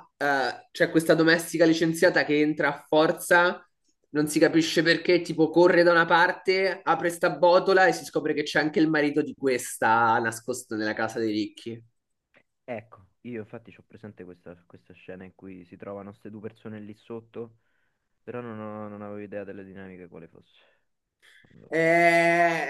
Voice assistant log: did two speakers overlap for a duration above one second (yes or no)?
no